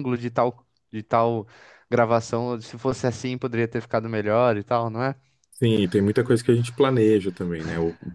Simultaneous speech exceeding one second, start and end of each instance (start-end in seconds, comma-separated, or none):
none